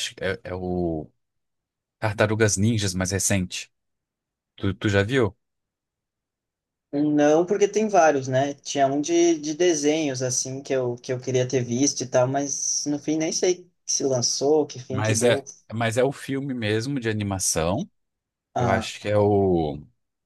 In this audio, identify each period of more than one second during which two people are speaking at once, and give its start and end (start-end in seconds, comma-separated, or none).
none